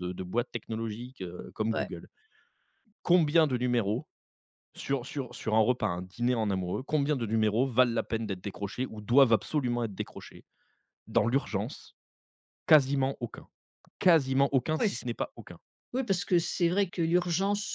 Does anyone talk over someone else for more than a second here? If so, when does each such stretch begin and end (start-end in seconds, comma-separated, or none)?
none